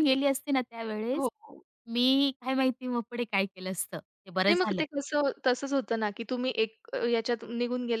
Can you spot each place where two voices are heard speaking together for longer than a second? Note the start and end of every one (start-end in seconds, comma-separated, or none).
none